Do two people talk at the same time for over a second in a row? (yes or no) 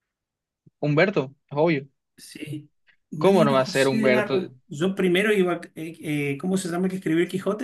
yes